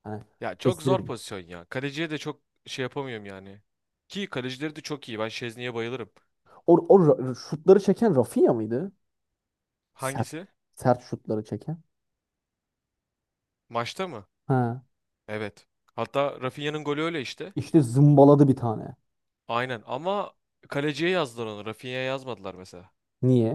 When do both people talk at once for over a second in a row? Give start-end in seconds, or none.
none